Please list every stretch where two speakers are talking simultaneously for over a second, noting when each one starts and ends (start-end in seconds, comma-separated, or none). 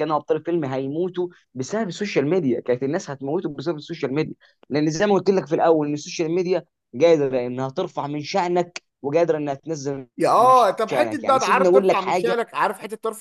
10.2-12.3